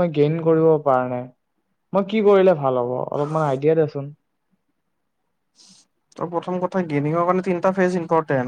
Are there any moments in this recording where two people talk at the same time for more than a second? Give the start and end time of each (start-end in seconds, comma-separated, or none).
none